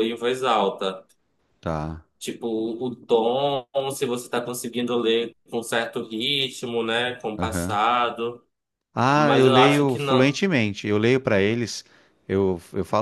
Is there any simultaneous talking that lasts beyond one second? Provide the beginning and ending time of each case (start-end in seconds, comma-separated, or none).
9.2-10.4